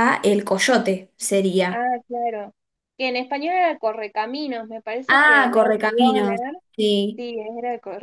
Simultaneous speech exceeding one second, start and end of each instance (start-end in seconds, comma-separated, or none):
5.1-6.5